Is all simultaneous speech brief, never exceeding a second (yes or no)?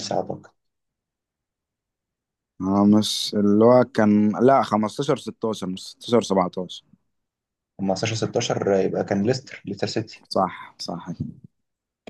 yes